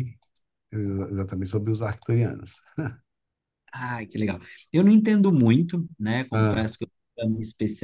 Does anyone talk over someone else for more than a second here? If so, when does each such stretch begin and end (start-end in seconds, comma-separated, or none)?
none